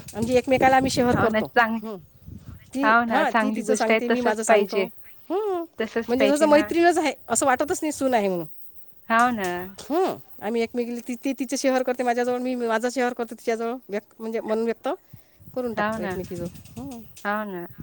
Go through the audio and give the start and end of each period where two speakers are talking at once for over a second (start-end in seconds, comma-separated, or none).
2.9-4.8